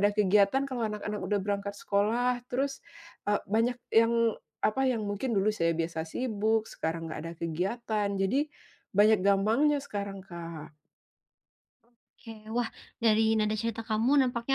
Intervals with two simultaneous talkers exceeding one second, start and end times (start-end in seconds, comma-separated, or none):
none